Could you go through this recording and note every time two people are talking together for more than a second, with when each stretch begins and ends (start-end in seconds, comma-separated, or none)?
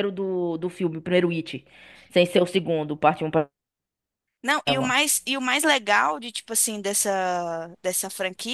none